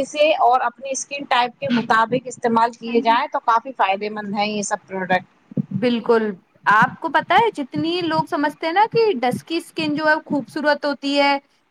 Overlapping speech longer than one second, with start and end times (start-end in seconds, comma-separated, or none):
none